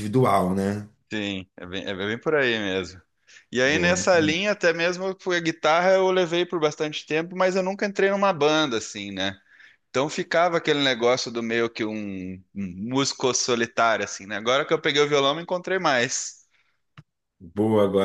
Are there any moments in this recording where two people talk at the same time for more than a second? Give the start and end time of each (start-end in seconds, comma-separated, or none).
none